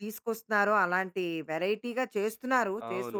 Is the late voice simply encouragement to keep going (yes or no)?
no